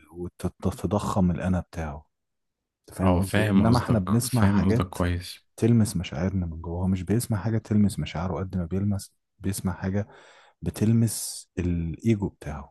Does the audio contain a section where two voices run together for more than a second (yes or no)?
yes